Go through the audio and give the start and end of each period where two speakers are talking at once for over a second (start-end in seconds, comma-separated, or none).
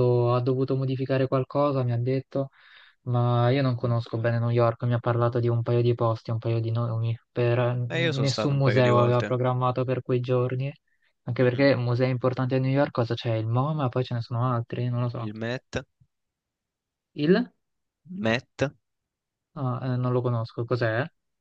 7.9-9.4